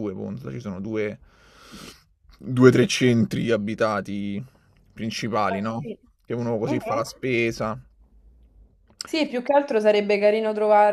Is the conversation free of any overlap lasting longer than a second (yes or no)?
yes